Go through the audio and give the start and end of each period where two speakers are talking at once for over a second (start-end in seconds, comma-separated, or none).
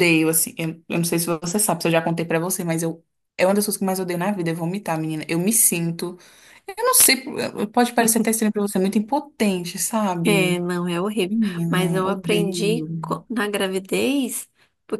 11.3-12.9